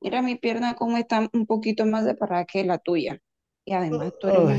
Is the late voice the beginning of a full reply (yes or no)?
no